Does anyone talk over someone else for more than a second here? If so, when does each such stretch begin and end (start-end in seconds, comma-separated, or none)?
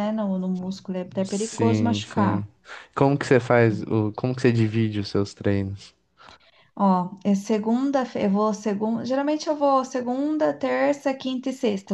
1.2-2.5